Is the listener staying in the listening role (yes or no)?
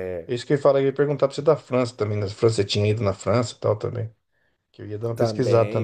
no